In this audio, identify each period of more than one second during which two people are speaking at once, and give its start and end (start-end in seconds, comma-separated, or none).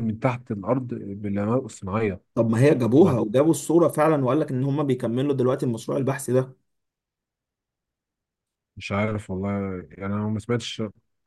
none